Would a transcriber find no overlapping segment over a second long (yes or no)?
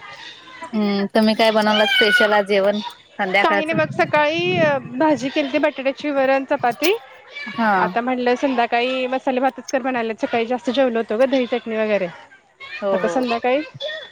yes